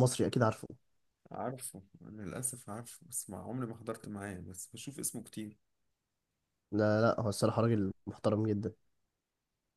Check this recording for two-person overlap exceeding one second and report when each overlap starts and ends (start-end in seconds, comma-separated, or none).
none